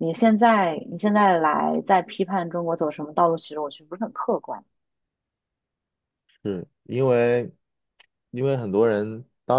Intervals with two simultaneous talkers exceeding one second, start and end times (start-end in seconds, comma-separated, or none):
none